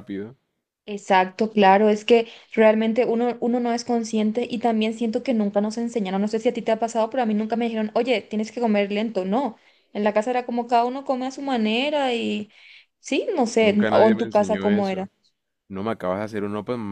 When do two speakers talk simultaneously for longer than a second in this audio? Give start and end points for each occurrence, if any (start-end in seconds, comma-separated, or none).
13.6-15.1